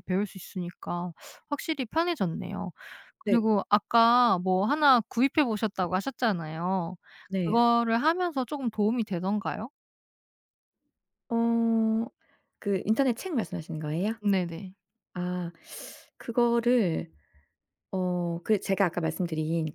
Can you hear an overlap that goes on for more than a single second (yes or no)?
no